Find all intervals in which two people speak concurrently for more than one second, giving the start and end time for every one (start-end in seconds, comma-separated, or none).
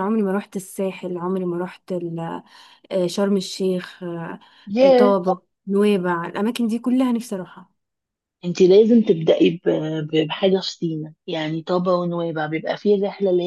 none